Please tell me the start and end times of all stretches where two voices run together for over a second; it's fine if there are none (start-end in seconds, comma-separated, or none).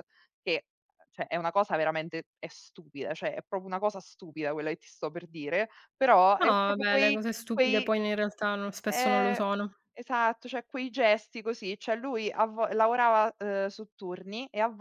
6.4-7.9